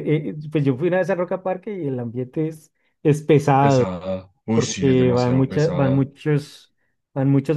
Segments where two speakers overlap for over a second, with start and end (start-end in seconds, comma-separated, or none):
4.5-6.1